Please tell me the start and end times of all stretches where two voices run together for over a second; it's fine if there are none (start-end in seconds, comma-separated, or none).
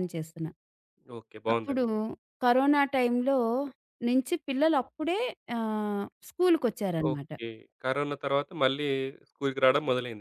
none